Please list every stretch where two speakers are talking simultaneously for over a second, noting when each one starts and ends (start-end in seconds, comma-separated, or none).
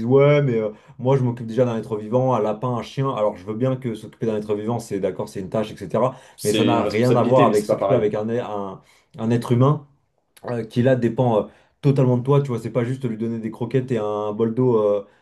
6.4-8.0